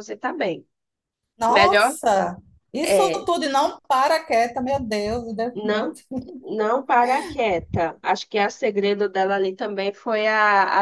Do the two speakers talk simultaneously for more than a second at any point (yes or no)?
no